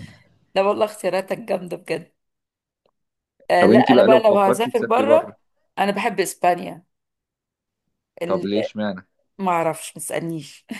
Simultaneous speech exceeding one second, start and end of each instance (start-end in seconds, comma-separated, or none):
3.6-5.3